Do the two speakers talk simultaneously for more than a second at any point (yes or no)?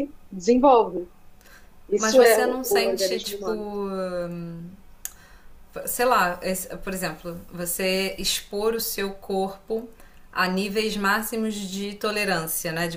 yes